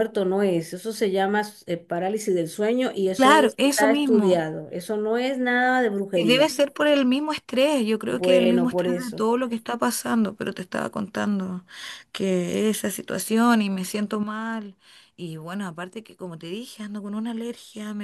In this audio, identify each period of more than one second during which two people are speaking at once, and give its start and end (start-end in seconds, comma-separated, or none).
3.2-4.4, 8.1-9.3